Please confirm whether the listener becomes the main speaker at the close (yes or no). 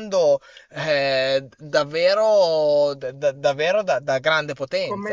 yes